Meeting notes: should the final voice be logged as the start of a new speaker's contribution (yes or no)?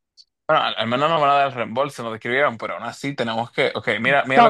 yes